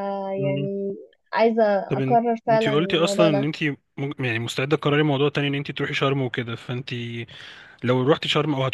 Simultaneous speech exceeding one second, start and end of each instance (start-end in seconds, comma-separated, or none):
2.0-3.5